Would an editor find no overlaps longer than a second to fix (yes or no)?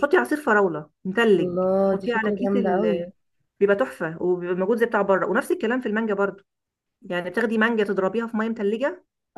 no